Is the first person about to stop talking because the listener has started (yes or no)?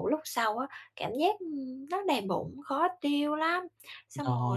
no